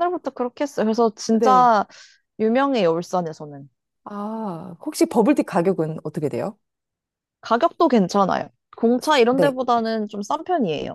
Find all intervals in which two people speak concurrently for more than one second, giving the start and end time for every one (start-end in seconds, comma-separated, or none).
none